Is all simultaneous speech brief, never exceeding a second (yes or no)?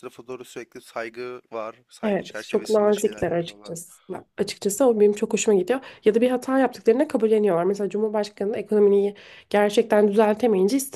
no